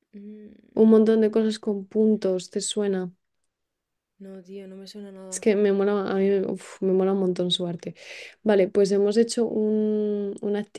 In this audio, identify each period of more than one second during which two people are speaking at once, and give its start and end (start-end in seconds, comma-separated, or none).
none